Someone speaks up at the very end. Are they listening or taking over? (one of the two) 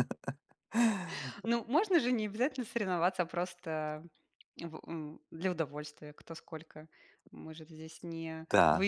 taking over